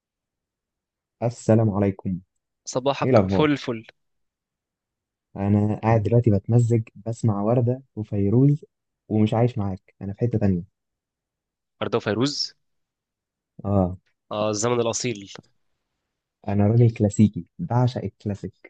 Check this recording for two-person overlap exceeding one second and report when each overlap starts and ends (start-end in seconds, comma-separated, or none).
none